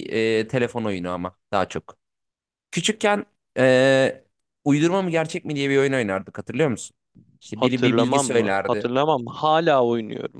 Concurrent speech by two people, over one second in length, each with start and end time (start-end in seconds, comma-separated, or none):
7.5-8.9